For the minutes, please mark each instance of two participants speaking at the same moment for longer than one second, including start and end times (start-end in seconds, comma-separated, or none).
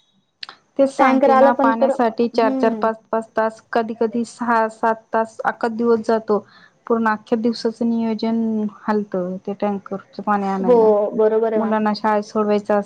1.0-2.9